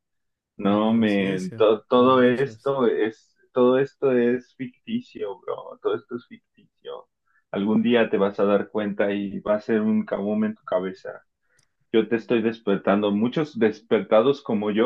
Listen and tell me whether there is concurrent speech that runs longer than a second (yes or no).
yes